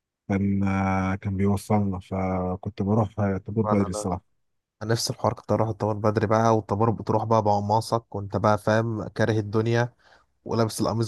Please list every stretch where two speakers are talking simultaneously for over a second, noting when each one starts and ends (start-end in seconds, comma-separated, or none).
none